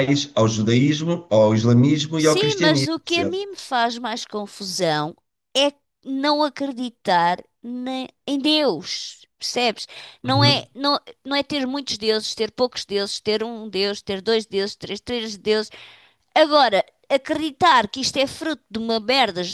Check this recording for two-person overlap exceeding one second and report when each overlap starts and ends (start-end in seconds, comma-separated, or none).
2.2-3.5